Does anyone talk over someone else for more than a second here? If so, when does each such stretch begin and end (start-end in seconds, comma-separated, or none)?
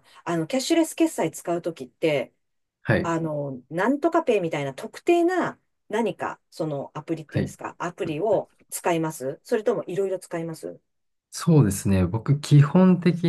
none